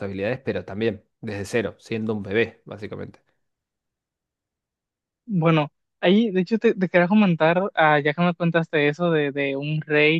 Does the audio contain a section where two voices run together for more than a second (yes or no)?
no